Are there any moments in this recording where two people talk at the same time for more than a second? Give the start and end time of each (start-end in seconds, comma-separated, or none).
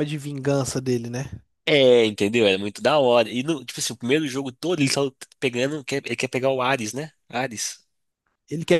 none